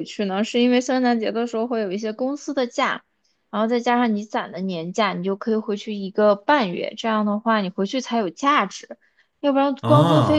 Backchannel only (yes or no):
yes